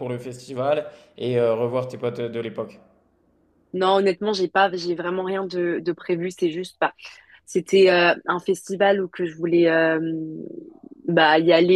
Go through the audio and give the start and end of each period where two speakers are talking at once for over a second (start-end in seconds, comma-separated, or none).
none